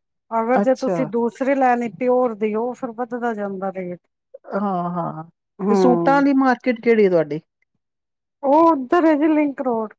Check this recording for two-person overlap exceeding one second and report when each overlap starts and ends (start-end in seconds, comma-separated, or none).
none